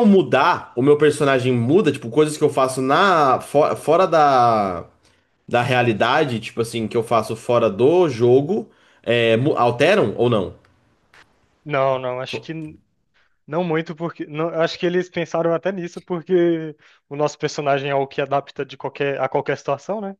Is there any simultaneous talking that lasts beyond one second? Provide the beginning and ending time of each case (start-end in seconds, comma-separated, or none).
none